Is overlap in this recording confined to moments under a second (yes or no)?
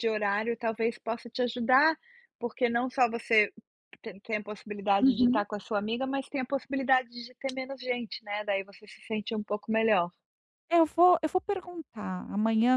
yes